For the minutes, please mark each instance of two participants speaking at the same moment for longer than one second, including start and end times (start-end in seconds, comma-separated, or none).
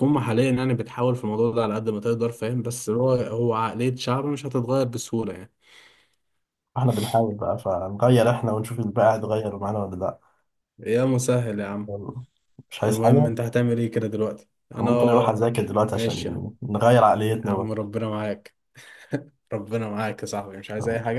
none